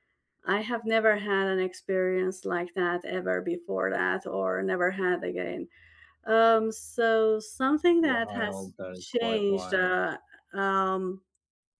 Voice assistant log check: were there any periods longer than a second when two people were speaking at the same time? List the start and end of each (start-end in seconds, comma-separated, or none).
8.0-9.9